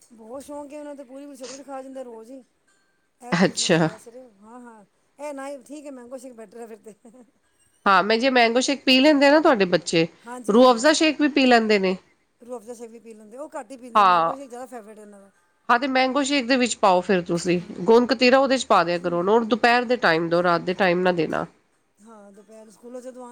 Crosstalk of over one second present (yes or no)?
no